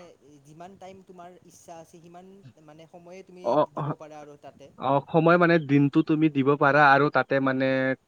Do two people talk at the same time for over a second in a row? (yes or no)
no